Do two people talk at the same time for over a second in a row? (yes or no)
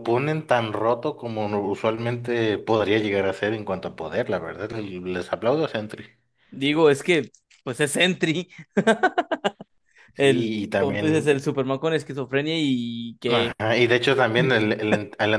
yes